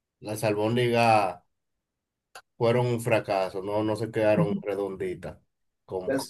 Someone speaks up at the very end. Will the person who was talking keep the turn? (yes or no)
no